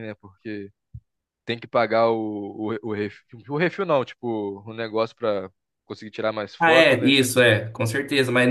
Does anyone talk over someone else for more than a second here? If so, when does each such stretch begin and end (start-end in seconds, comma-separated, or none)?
none